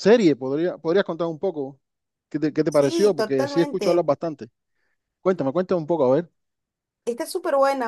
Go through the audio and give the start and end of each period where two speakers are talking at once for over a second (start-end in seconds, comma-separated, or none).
2.7-4.1